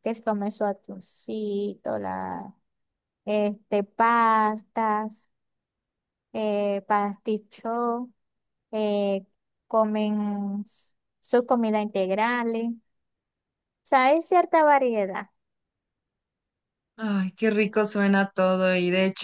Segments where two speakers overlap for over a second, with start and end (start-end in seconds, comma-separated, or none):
none